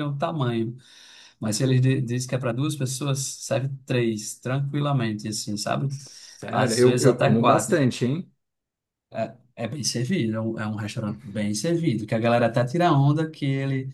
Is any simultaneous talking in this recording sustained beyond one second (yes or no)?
yes